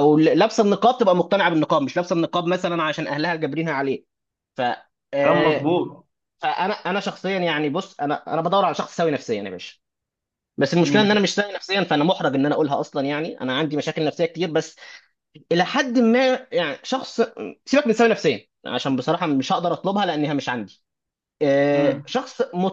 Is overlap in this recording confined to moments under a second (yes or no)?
yes